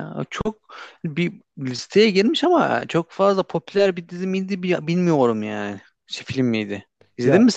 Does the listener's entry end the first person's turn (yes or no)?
yes